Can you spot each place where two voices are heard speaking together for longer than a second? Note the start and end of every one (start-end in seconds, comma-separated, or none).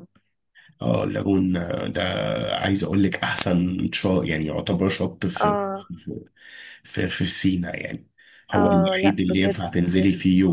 8.5-9.8